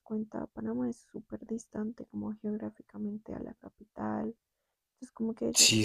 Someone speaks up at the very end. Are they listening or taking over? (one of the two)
taking over